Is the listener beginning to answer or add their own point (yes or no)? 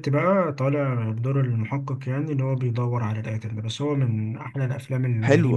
yes